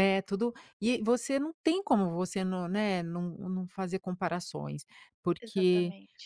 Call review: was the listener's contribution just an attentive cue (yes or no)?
yes